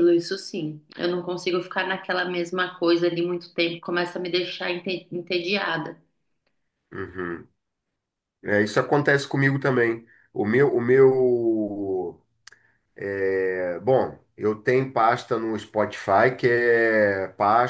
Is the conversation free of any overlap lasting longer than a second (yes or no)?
yes